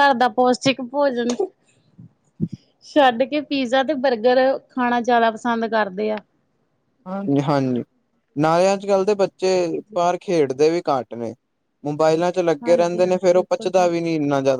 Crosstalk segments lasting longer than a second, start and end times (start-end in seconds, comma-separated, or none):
12.6-13.9